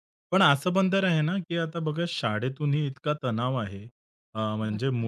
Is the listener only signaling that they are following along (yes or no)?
yes